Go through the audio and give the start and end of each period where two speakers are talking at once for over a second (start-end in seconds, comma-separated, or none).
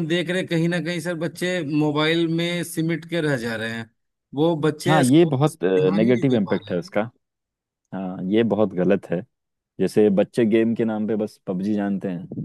4.9-6.8